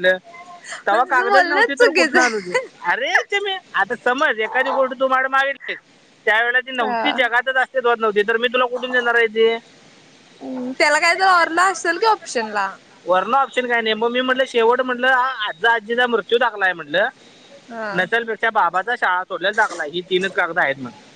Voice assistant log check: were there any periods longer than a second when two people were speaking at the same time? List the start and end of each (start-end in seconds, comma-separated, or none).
0.9-2.5